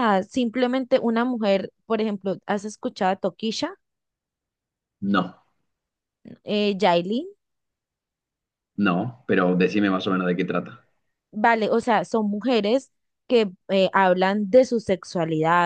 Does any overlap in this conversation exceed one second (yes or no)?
no